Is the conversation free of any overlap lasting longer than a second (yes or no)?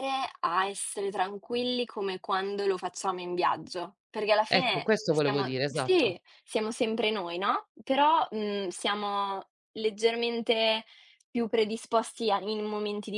no